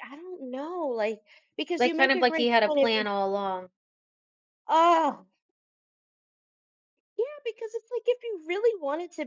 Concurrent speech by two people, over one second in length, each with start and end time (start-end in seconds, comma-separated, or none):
1.8-3.1